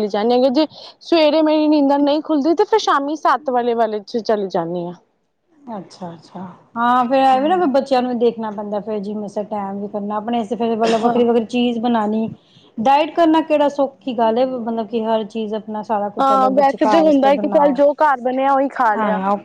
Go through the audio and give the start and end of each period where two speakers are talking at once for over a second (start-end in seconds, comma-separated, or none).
16.2-17.8